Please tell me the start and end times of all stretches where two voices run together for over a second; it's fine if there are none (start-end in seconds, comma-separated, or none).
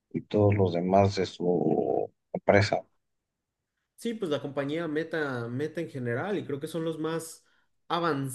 none